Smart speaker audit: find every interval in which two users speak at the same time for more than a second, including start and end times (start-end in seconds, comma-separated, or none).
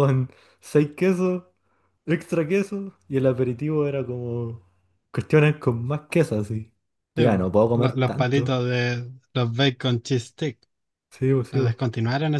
7.2-8.6